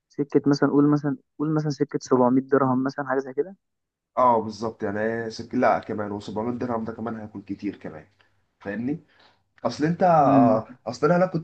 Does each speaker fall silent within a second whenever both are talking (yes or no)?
yes